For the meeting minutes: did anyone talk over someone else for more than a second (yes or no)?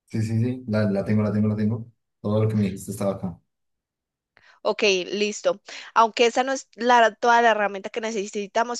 no